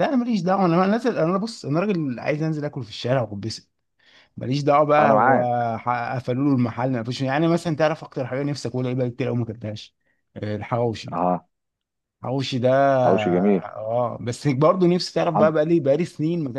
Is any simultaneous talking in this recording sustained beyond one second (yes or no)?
no